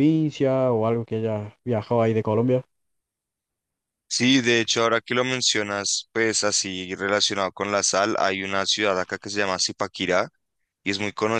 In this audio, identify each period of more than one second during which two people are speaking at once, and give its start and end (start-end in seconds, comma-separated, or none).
none